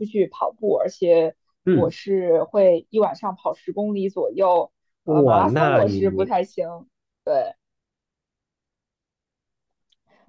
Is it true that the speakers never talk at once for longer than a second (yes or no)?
no